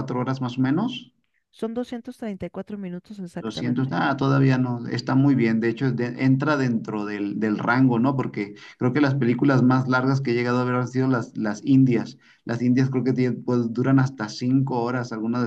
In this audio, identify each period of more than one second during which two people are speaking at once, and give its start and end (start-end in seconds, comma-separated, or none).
none